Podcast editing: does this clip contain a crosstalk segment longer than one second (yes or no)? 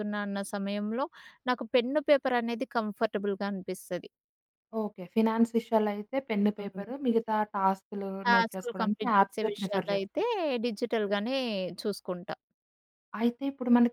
yes